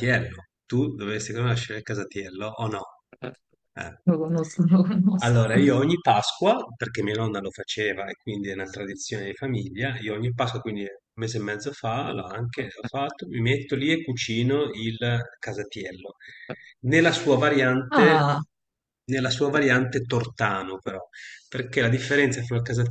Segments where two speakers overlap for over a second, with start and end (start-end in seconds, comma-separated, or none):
none